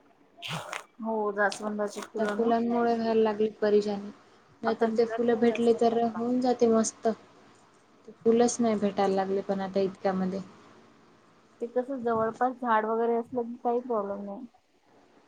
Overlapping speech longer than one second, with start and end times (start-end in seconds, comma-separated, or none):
4.7-6.2